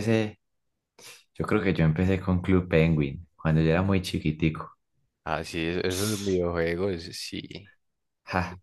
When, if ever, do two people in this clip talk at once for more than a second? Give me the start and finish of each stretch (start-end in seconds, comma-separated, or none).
none